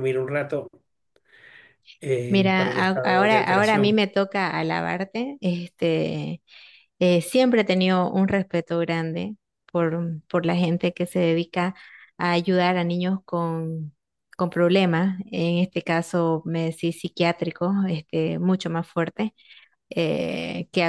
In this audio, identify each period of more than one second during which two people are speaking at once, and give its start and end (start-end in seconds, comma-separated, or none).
2.3-4.0